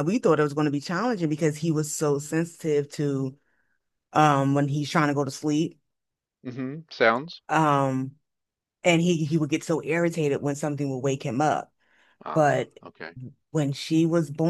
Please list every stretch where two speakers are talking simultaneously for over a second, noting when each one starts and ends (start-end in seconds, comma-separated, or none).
none